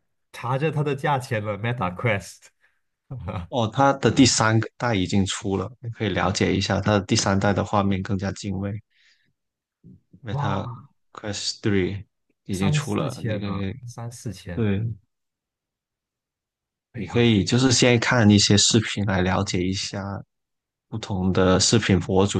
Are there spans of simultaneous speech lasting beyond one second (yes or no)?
yes